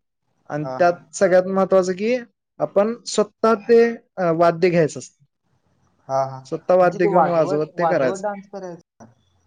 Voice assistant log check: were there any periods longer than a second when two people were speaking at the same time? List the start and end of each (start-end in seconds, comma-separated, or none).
none